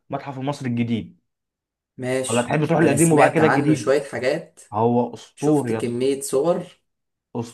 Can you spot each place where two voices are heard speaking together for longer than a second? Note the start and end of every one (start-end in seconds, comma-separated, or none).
2.3-3.9